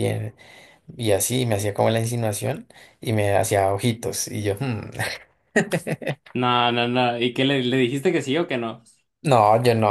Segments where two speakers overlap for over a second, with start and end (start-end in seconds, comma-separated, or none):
none